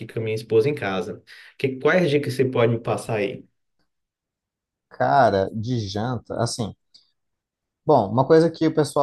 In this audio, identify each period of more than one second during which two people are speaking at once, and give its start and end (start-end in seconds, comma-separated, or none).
none